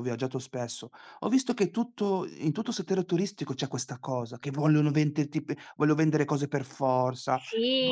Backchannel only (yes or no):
no